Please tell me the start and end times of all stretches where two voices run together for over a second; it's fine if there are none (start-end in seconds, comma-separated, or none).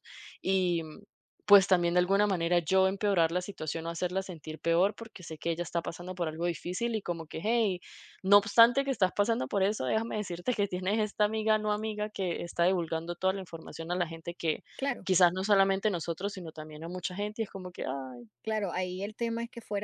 none